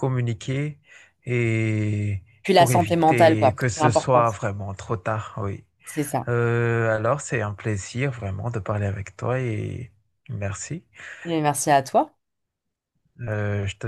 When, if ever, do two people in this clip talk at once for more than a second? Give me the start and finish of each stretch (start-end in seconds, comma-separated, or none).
2.4-4.2